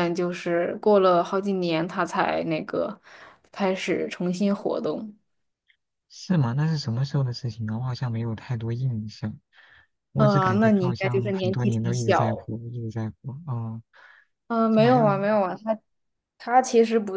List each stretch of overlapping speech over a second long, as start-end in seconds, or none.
10.2-12.5